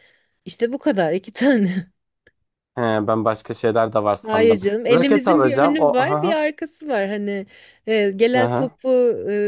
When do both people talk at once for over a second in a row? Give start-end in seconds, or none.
4.3-6.3